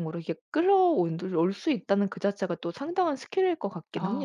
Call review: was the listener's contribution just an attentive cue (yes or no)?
no